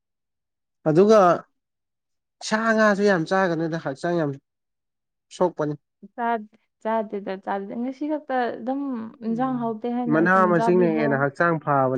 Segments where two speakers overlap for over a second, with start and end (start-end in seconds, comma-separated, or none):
9.2-11.3